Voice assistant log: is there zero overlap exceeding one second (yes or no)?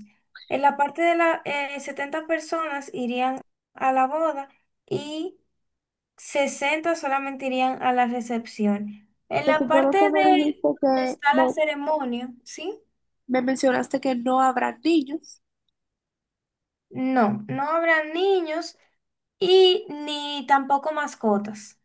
no